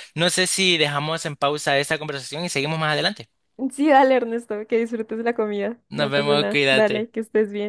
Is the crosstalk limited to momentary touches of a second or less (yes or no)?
no